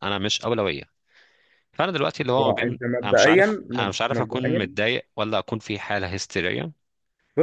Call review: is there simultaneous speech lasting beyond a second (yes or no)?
yes